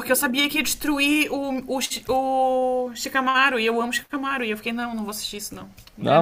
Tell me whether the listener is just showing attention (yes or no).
yes